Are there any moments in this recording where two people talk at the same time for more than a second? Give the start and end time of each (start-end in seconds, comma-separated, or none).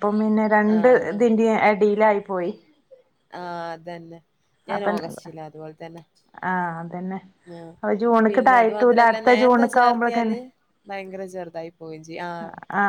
8.3-10.4